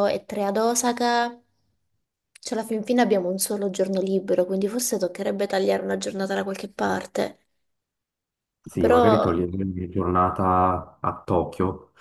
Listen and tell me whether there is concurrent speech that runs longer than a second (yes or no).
no